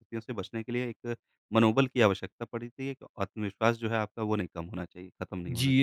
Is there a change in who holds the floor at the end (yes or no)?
yes